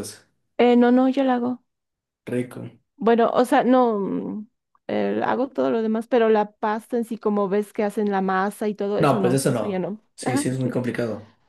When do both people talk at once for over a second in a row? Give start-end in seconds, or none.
9.0-10.7